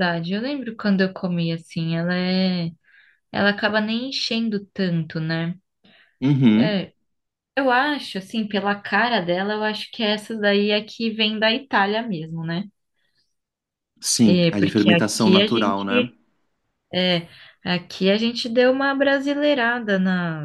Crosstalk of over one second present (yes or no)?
yes